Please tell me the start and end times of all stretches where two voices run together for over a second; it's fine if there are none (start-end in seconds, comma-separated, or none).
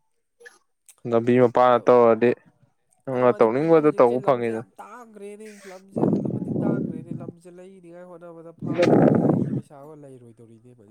3.1-4.6